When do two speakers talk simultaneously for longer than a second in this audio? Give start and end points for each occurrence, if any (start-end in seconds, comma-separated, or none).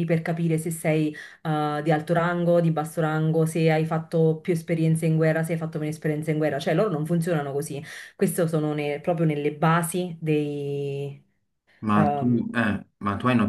none